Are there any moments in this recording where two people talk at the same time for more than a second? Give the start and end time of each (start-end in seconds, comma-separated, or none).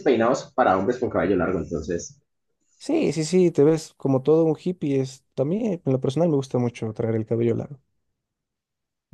none